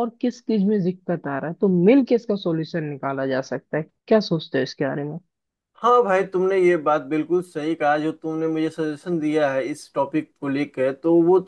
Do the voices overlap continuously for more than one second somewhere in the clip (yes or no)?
no